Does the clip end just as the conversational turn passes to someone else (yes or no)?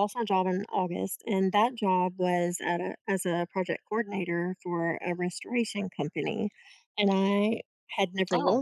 no